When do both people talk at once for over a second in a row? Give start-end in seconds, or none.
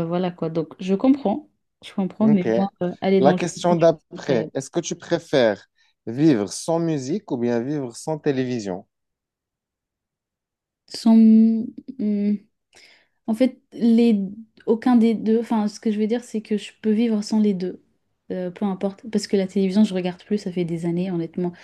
3.2-4.5